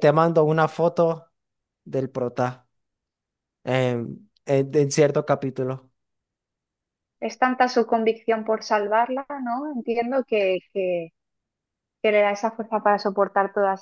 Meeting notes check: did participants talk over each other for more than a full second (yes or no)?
no